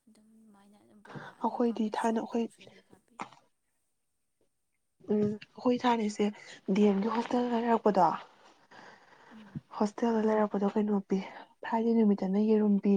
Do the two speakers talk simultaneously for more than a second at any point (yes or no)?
yes